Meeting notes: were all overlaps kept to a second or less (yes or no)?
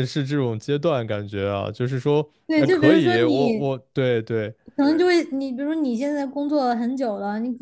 no